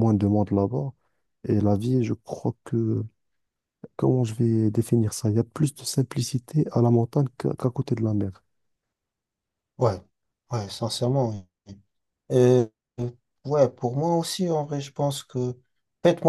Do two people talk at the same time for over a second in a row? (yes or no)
no